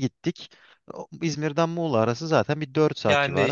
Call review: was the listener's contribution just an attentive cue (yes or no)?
no